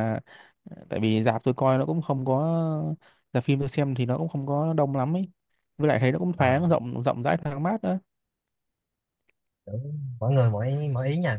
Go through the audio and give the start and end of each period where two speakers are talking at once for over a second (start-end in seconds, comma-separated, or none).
none